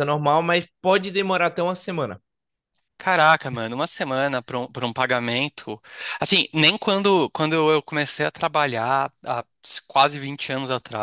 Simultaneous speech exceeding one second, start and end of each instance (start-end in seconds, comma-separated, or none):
none